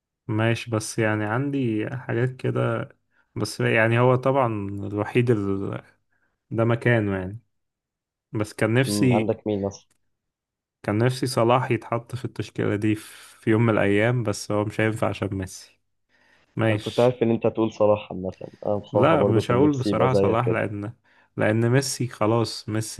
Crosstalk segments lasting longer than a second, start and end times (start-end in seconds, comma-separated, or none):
18.9-20.6